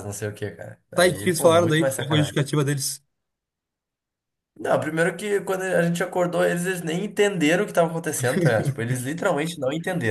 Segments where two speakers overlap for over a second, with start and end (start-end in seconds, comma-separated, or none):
0.9-2.4